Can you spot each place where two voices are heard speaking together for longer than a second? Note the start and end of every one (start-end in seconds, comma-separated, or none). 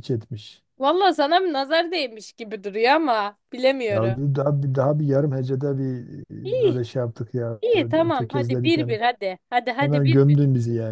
7.6-9.0